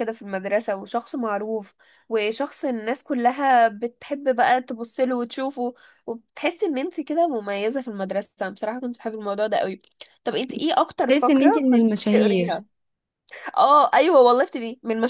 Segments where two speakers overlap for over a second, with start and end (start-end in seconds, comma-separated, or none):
11.1-12.6